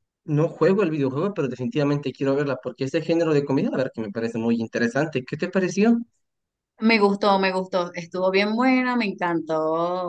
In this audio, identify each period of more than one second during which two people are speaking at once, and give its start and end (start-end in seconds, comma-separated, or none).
none